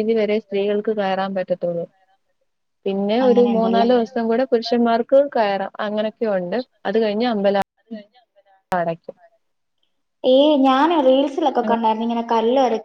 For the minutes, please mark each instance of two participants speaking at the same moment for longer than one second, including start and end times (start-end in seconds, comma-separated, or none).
none